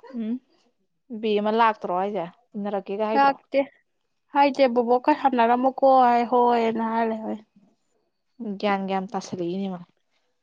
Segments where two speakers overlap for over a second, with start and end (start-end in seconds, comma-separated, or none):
none